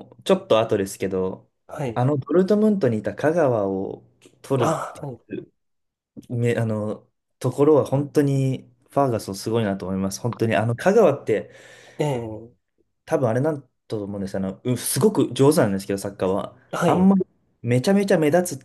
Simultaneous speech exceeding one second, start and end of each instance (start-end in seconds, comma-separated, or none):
none